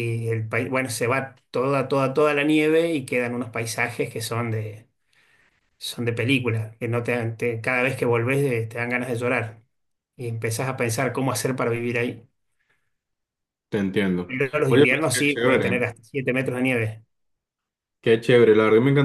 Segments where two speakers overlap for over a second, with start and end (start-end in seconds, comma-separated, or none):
14.3-15.8